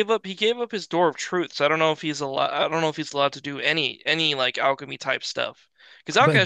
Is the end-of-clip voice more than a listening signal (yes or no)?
no